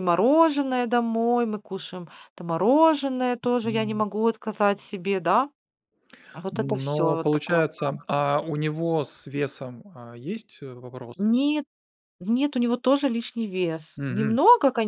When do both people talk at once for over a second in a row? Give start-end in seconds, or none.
6.5-8.1